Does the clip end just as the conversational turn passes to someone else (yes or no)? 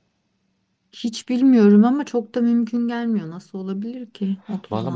yes